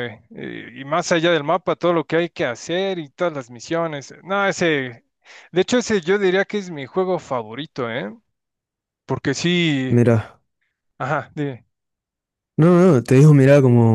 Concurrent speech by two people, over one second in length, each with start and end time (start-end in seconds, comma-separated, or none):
none